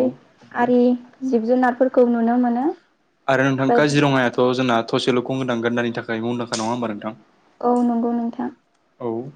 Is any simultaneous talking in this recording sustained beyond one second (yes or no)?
no